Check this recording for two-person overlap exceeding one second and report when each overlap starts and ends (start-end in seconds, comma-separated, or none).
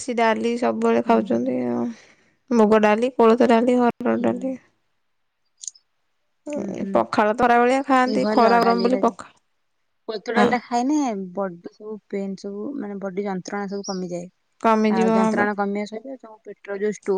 6.9-9.3